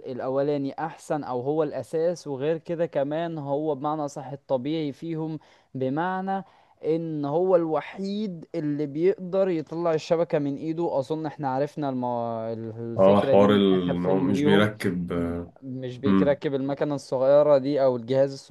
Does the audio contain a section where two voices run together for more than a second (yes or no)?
yes